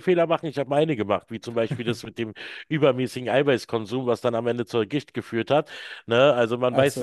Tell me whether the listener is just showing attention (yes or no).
yes